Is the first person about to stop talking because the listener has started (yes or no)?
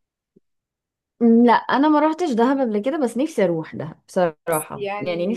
yes